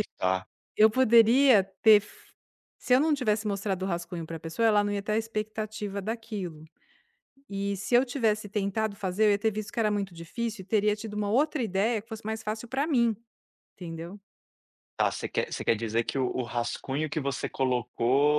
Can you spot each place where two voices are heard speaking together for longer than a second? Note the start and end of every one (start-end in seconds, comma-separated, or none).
none